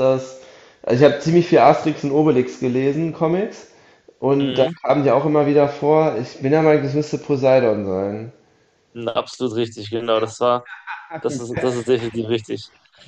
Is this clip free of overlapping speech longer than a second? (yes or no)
yes